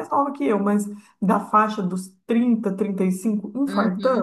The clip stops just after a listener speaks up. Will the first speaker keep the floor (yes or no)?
no